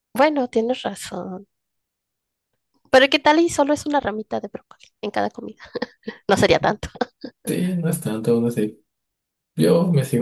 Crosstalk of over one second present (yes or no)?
no